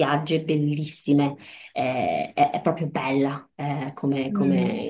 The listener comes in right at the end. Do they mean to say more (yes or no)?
no